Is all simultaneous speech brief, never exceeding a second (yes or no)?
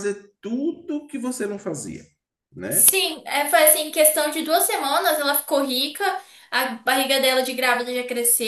yes